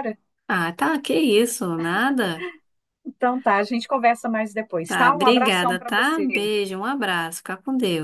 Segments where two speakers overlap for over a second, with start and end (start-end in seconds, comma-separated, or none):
4.8-6.5